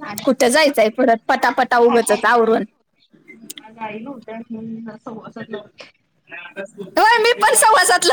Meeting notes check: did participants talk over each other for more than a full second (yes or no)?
no